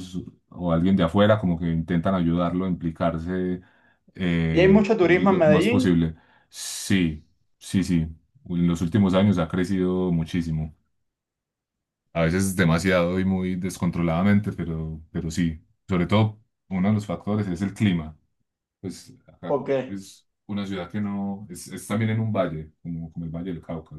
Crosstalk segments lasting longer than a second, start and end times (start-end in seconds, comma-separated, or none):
4.5-5.9